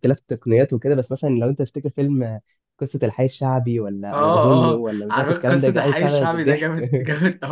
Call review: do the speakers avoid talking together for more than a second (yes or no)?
no